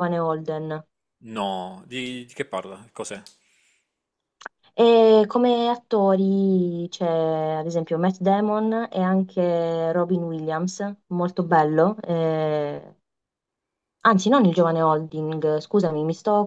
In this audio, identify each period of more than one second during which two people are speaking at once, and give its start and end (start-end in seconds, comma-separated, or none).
none